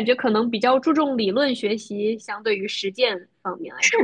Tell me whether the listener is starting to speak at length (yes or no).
yes